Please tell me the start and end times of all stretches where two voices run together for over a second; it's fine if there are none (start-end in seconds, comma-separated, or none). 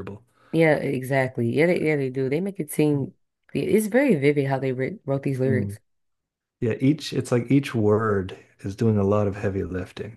none